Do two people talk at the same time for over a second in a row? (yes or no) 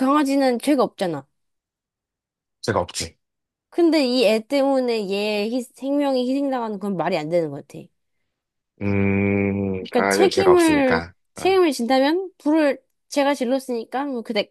yes